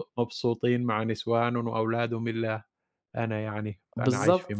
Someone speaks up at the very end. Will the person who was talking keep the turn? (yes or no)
no